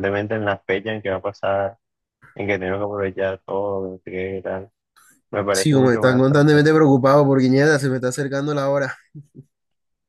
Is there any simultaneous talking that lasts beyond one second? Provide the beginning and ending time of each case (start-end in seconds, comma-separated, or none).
5.5-6.7